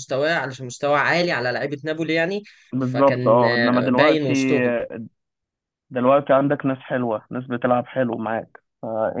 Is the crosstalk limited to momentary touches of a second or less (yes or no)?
no